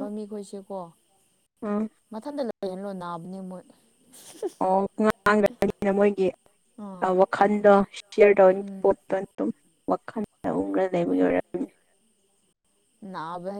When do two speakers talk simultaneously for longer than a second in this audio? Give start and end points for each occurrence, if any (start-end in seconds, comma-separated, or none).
none